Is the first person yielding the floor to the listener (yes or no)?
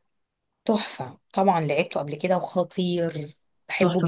no